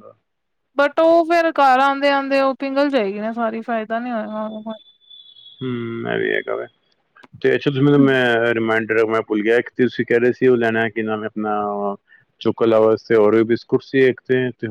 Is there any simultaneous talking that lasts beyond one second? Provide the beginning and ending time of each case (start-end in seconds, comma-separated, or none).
none